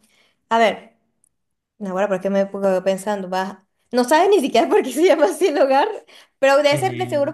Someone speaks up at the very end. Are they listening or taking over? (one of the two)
listening